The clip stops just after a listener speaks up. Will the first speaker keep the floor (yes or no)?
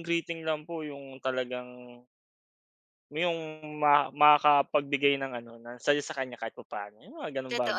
no